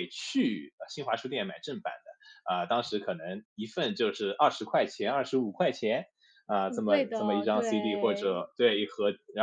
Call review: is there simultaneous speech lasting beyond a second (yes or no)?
yes